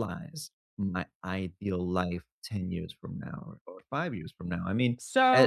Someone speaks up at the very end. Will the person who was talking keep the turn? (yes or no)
no